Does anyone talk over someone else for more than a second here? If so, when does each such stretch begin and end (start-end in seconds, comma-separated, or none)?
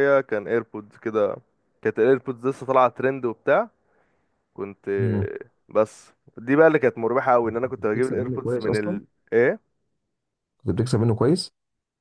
7.6-9.0